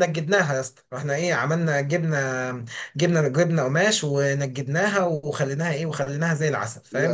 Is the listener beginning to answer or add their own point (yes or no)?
no